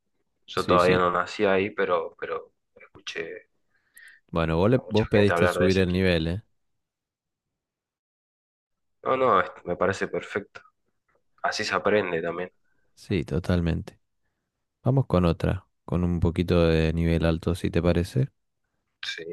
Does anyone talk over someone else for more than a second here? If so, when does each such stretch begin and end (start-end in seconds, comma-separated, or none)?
4.7-6.1